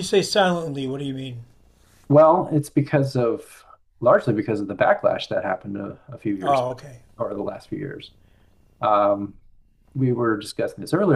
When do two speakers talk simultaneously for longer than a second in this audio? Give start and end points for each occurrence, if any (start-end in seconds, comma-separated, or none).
none